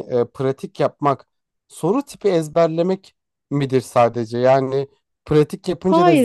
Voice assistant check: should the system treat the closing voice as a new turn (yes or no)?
yes